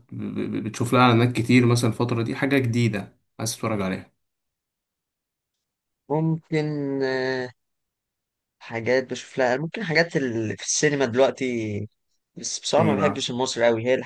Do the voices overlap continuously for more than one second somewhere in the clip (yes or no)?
no